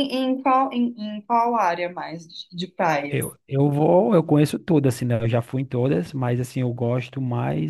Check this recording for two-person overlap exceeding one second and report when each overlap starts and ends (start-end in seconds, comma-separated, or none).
none